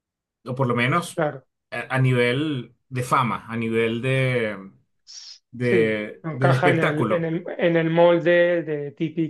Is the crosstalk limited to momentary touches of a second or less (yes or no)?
no